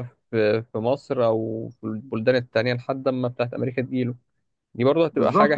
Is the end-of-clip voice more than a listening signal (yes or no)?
yes